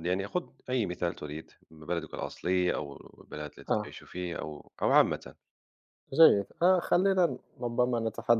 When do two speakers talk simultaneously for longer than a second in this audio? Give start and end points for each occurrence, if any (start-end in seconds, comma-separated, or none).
none